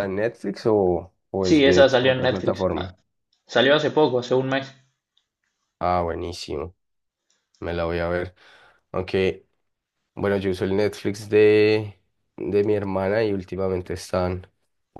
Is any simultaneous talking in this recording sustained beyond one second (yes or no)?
yes